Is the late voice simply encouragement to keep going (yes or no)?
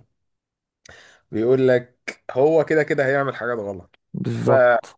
yes